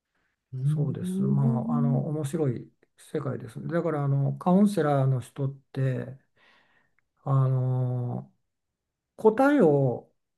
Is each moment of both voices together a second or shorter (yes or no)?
no